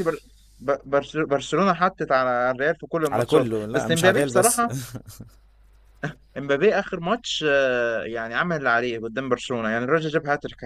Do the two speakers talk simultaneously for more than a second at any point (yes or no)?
yes